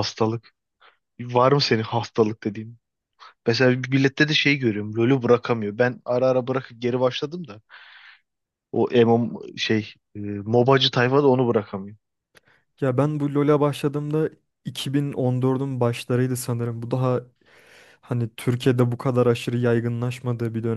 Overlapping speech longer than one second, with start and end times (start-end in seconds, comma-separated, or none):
none